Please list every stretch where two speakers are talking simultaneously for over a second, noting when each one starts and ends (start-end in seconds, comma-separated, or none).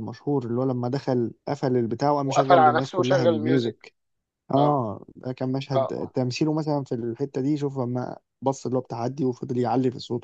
2.2-3.8